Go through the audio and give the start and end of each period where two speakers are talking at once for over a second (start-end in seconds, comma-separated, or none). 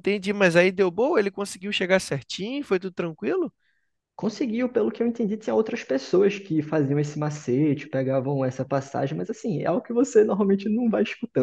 none